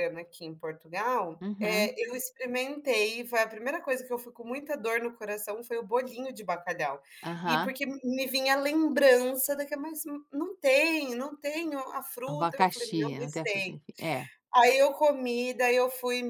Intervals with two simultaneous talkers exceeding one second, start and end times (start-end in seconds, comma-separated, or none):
12.2-13.8